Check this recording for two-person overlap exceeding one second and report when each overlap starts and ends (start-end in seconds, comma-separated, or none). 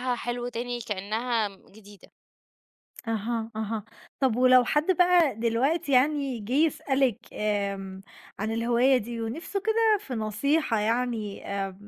none